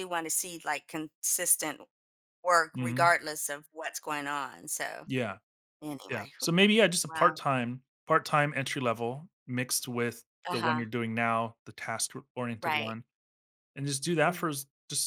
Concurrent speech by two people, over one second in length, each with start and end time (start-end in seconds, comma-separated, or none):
none